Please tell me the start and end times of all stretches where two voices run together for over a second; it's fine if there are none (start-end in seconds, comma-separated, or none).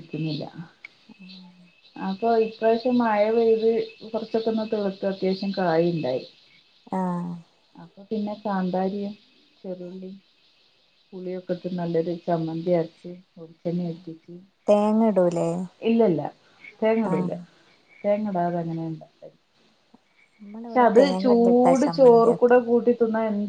20.6-22.5